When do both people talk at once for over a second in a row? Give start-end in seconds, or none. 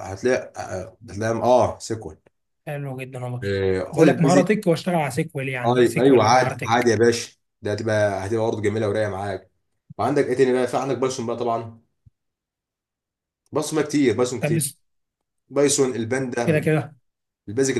5.7-6.9